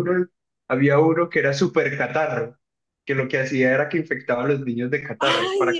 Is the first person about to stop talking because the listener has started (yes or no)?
yes